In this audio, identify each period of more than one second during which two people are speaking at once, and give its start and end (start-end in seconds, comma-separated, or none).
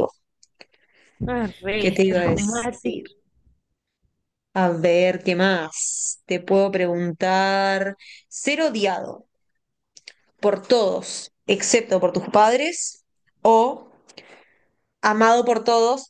1.8-3.0